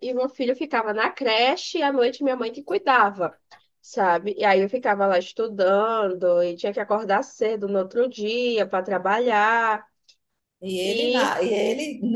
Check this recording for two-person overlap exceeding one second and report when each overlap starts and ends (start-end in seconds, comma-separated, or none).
none